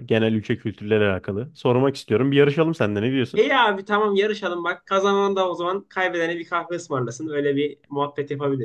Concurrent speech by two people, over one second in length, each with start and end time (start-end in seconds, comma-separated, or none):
none